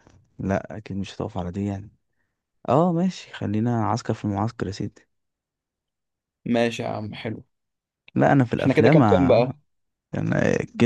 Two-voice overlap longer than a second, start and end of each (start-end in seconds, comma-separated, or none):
none